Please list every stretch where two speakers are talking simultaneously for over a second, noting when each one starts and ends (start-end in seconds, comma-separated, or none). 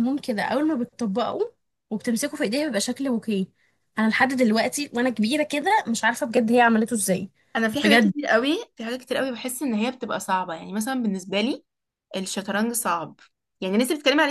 none